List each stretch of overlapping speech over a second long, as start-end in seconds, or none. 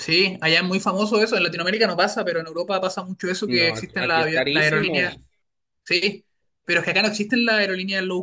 3.5-5.2